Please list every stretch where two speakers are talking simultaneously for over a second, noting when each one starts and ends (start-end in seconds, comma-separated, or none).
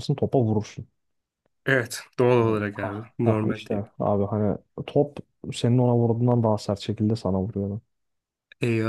2.4-4.0